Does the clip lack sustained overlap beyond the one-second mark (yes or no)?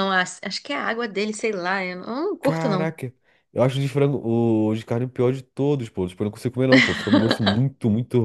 yes